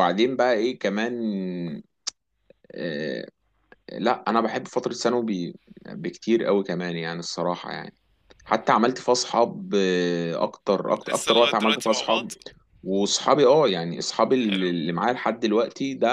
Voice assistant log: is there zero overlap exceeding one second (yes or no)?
no